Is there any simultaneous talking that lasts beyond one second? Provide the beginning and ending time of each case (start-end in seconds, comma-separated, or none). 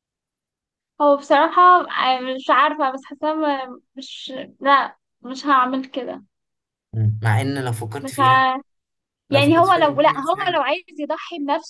9.3-10.6